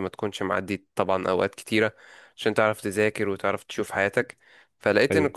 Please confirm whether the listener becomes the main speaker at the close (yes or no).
no